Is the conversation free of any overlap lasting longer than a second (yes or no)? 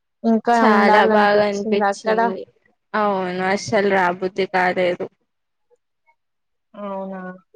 no